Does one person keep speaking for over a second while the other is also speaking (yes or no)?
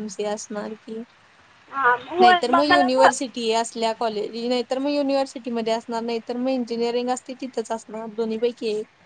yes